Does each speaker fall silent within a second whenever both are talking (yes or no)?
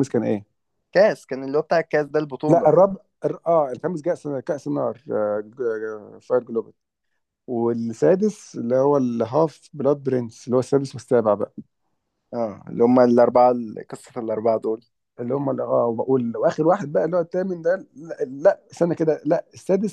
yes